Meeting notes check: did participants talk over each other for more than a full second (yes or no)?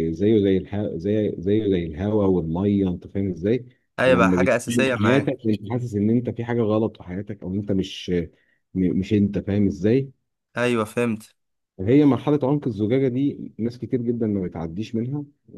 yes